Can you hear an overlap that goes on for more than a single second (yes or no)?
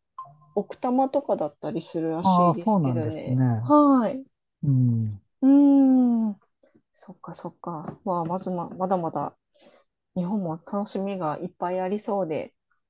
yes